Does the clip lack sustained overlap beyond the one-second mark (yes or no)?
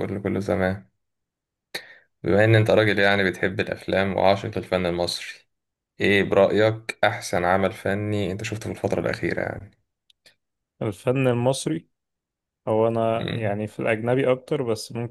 yes